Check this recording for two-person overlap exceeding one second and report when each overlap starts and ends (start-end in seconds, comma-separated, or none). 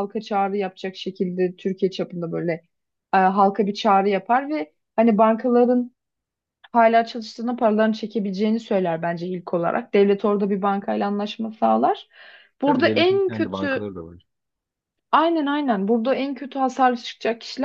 12.7-13.9